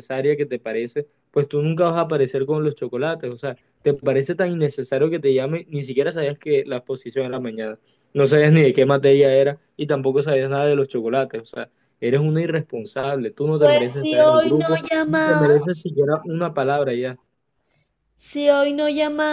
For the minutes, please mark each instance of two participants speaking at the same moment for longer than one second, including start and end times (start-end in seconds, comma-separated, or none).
13.6-15.5